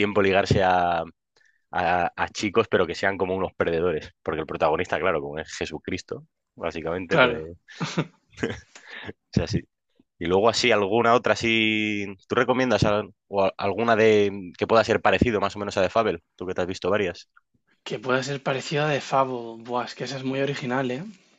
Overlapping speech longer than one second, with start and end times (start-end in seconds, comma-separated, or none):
none